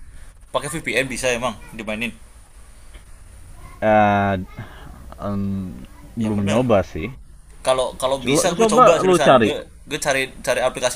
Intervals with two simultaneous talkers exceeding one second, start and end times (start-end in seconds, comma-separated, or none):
8.2-9.6